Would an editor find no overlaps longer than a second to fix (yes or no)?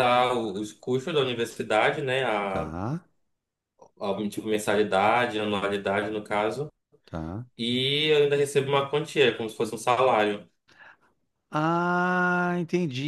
yes